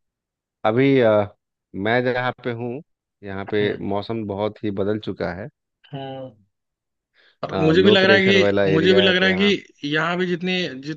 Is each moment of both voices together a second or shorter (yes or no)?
no